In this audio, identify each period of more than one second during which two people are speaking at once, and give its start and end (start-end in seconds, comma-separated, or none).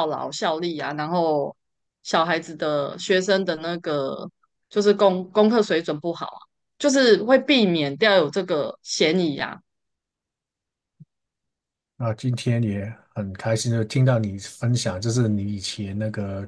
none